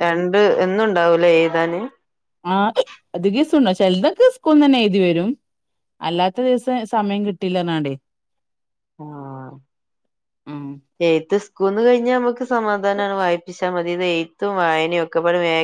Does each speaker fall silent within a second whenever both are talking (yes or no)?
yes